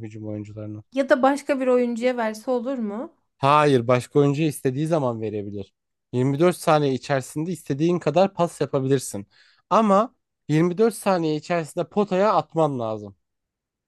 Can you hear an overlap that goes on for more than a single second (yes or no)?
no